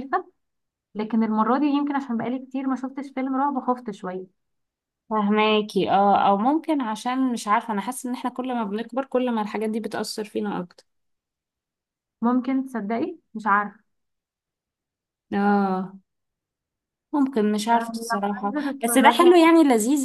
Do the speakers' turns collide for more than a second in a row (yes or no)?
yes